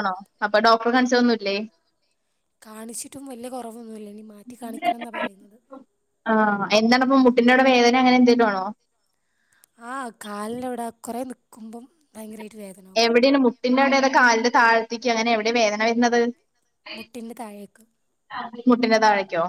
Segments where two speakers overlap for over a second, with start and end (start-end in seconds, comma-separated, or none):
none